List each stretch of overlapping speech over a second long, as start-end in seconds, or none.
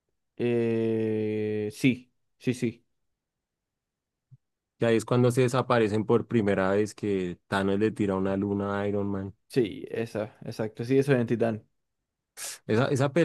none